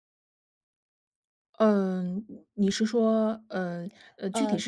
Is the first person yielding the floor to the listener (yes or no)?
yes